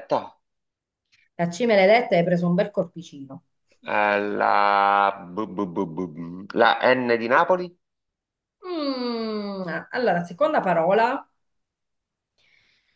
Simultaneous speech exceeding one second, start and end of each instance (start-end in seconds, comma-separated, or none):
none